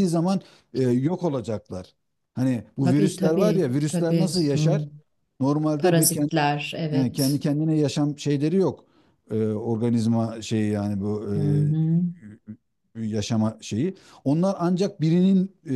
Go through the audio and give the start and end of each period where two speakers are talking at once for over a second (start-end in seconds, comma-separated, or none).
2.8-4.8